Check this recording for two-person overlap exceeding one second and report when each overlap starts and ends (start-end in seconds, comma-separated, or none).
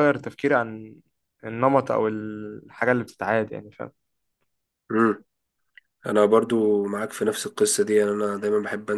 none